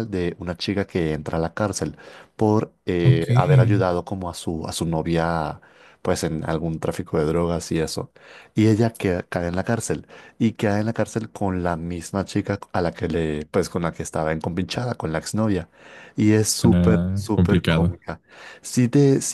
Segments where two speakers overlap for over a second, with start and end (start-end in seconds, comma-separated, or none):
16.5-18.0